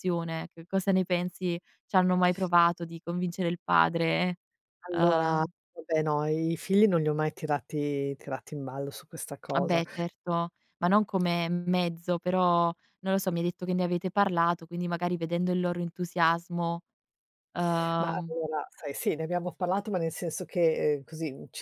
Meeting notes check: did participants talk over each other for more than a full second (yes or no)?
no